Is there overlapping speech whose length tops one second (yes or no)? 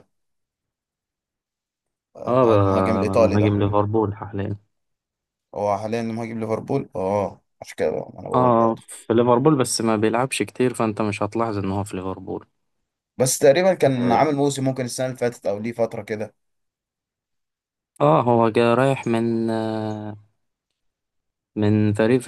yes